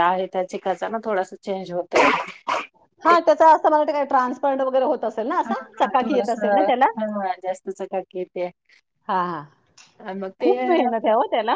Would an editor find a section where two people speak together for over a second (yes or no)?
no